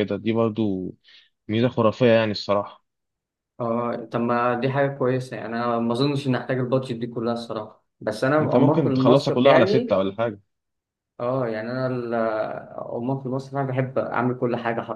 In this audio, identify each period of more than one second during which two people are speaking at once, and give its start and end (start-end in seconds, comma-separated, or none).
8.4-10.0